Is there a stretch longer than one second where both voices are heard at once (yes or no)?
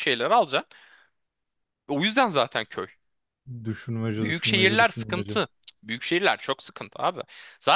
yes